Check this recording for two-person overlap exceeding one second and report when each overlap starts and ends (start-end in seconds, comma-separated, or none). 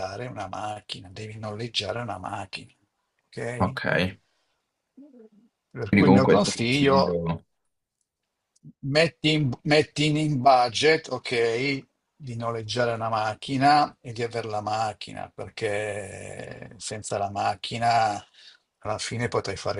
5.8-7.2